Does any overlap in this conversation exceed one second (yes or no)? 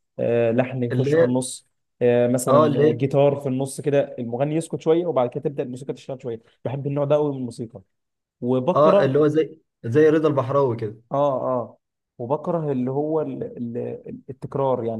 no